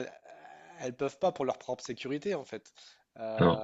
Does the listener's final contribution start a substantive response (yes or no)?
no